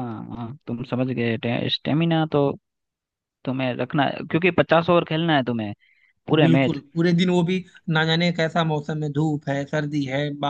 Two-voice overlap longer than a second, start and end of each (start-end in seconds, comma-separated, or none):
none